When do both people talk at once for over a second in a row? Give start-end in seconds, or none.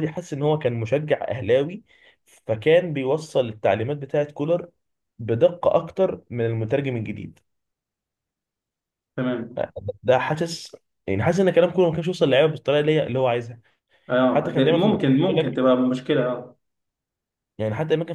14.3-15.7